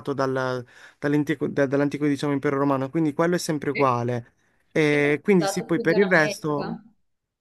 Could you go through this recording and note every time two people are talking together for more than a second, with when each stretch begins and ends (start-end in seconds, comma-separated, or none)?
4.9-6.8